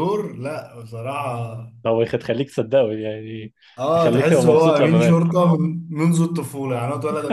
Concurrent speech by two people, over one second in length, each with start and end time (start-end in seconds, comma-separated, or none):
3.9-5.2